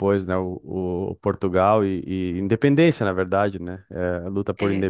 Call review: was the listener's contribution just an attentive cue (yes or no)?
yes